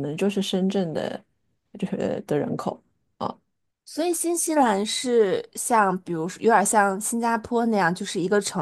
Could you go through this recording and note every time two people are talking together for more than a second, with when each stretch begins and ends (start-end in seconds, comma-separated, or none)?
none